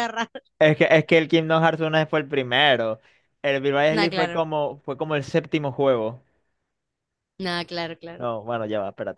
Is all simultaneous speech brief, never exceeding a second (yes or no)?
yes